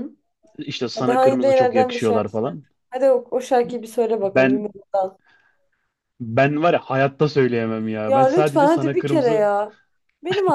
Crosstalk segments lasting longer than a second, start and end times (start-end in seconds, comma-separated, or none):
0.9-2.6, 8.1-9.4